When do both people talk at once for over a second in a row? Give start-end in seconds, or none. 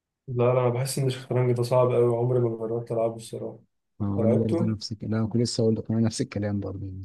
none